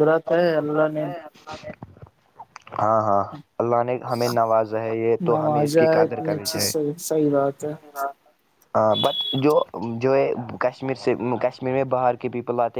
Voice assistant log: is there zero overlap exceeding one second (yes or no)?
no